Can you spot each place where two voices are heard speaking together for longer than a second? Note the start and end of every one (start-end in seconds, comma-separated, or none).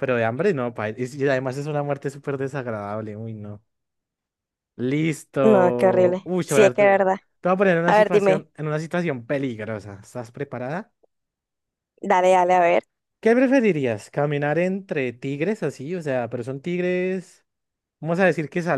5.4-7.0